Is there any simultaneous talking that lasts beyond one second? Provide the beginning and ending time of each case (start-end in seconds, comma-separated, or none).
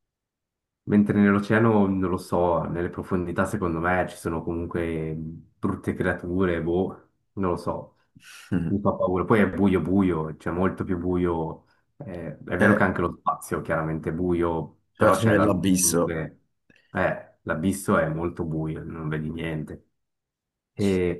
15.0-16.2